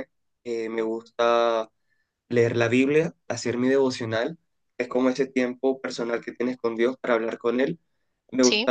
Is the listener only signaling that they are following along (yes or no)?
yes